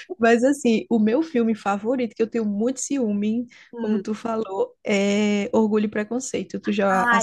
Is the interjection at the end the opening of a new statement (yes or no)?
yes